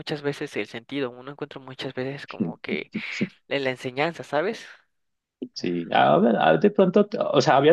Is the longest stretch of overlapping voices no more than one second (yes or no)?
yes